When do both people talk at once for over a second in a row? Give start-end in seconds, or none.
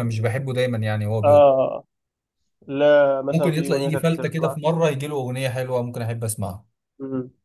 3.3-4.6